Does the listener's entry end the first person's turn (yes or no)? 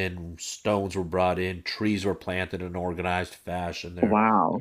yes